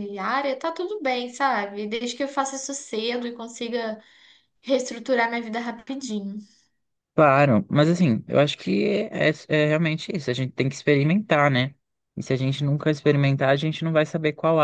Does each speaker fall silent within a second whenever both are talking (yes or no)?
yes